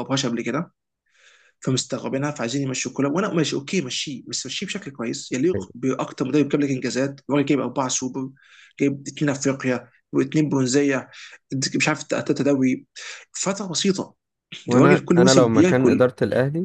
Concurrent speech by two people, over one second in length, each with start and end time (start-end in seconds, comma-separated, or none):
14.7-16.1